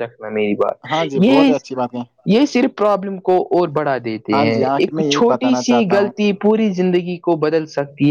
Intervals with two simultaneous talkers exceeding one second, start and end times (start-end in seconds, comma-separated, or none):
4.3-6.1